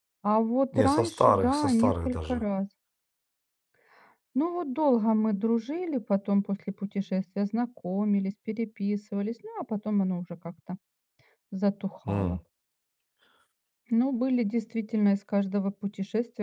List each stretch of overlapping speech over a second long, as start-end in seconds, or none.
0.7-2.5